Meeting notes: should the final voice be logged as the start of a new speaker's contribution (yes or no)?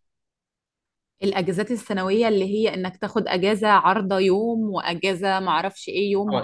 yes